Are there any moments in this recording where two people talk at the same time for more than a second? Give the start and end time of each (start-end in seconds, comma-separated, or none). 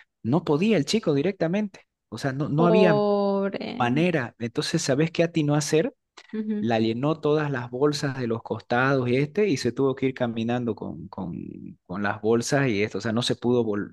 none